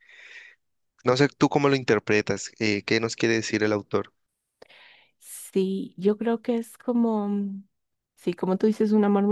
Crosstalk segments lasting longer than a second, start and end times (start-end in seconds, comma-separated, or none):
none